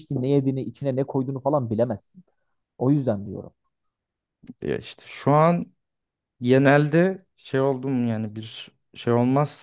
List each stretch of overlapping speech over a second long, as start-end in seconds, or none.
none